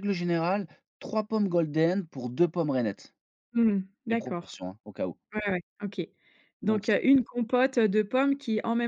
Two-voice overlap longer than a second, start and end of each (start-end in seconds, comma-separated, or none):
none